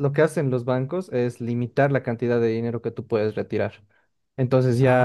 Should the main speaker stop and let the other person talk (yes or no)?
no